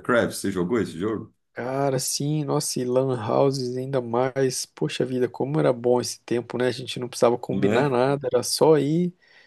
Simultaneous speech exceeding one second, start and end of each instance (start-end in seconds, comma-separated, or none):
none